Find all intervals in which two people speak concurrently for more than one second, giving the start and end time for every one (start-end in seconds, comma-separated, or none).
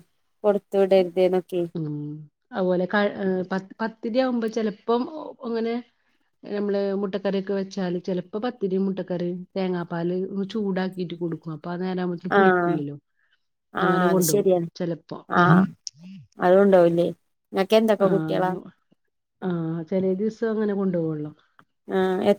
none